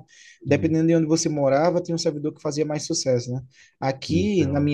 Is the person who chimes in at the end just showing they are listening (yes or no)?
yes